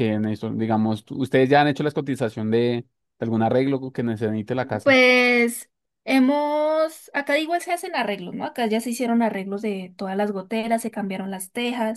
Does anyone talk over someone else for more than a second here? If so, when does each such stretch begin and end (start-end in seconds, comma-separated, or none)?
none